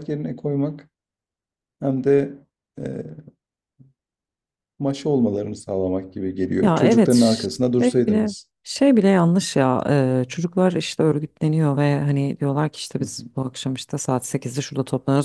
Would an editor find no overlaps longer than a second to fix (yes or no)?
no